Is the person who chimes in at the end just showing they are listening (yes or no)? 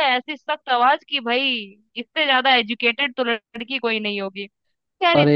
yes